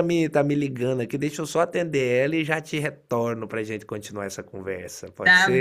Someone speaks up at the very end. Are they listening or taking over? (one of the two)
taking over